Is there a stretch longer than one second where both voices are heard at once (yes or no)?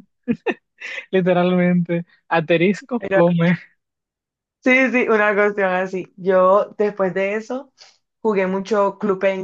no